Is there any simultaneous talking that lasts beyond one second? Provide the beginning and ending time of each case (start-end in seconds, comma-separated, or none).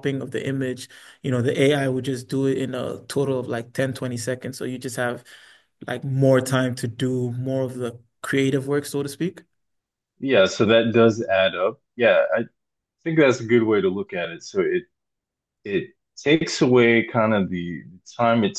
none